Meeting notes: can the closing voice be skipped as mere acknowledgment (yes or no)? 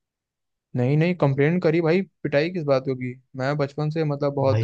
no